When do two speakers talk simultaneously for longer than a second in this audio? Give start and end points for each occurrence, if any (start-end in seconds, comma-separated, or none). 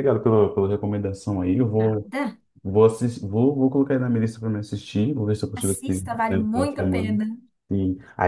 5.5-7.2